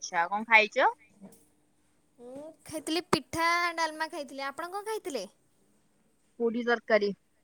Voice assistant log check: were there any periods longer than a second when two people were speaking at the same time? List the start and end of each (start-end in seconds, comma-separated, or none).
none